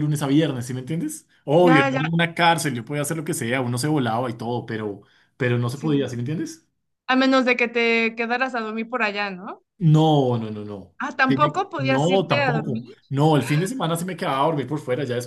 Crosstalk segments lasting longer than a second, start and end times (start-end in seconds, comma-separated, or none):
11.0-13.0